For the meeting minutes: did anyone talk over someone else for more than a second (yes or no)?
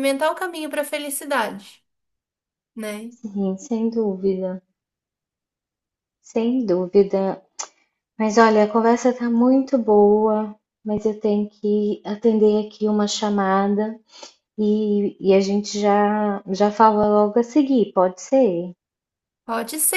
no